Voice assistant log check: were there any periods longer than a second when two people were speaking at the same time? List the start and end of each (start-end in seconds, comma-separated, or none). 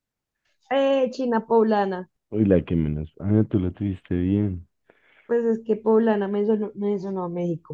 none